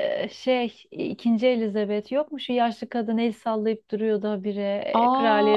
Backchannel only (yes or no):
no